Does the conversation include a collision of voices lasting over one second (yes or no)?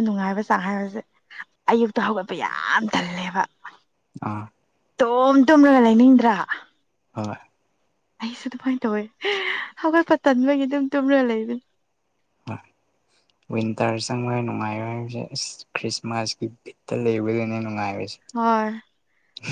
no